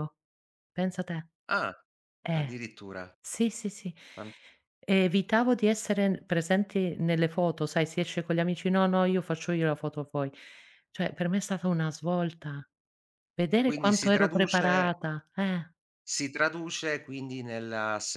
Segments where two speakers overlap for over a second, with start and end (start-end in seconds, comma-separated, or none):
13.6-14.9